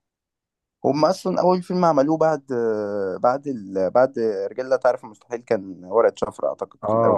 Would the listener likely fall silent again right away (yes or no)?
no